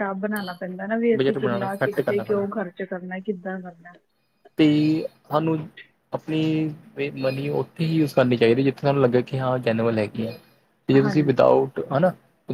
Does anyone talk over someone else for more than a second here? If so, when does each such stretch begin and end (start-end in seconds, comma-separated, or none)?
1.1-2.5